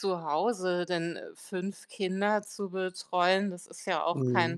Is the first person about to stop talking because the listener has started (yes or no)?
no